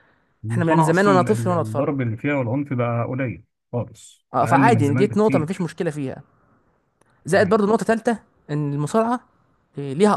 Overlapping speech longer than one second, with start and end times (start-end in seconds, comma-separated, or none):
0.5-1.9, 4.3-5.7